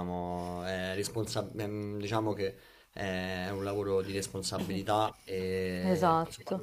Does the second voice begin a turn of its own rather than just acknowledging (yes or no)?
no